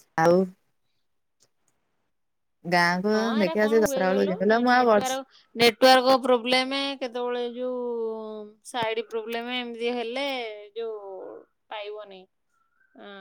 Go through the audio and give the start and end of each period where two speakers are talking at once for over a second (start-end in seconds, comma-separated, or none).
3.1-5.2